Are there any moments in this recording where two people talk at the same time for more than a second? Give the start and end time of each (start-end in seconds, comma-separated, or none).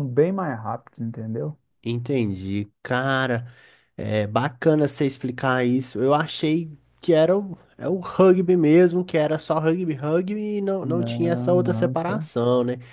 10.8-12.3